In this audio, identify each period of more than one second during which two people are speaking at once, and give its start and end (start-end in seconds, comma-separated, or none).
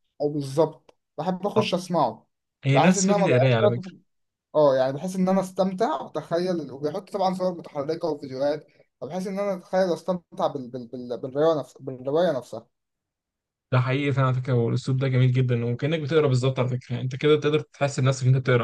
2.7-4.0